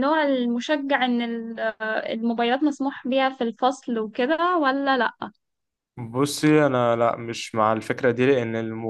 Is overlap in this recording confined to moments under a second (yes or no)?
yes